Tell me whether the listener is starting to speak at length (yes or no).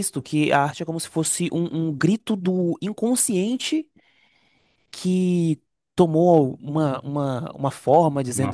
yes